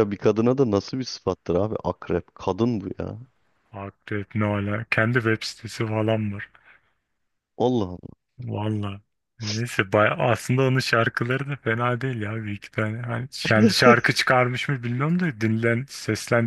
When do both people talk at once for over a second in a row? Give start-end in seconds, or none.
none